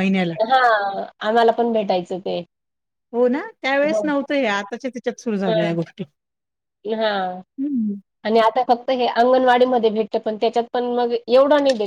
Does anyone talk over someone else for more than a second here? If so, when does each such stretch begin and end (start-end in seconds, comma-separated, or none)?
none